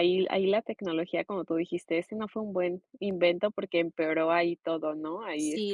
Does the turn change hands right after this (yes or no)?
yes